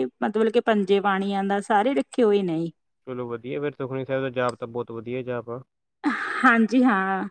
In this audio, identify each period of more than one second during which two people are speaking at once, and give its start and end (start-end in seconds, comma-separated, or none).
none